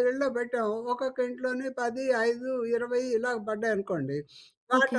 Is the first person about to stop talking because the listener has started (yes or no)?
no